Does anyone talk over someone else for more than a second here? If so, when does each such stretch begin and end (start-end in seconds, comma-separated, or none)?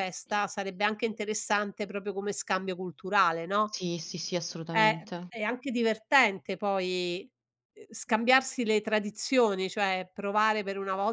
none